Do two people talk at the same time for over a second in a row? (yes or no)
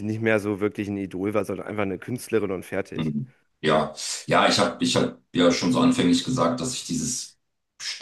no